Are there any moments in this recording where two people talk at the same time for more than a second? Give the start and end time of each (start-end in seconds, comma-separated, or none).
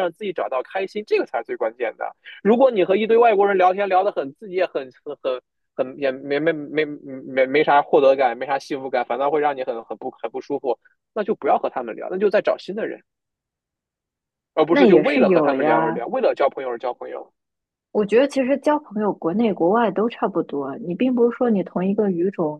14.7-16.0